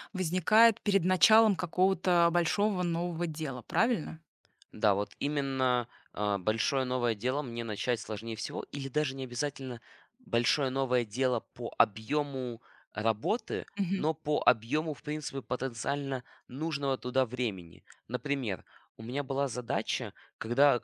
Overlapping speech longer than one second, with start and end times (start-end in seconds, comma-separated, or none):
none